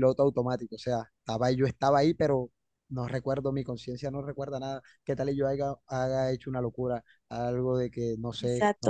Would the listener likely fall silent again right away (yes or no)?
no